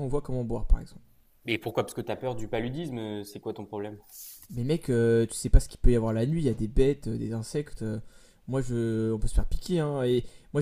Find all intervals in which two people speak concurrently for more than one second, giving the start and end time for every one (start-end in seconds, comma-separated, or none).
none